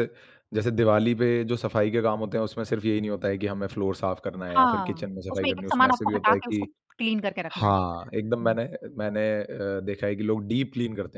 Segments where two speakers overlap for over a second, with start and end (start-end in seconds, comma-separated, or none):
4.6-6.6